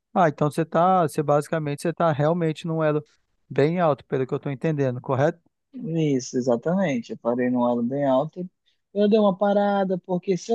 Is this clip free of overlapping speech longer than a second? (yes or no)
yes